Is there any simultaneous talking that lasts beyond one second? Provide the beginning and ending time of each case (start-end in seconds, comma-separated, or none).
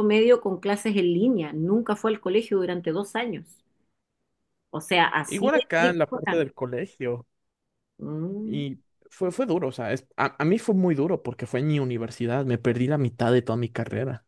5.2-6.5